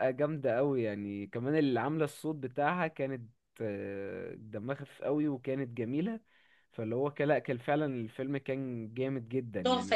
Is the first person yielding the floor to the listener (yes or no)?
yes